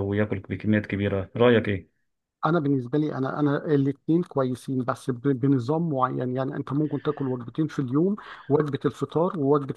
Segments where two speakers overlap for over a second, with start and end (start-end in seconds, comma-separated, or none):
none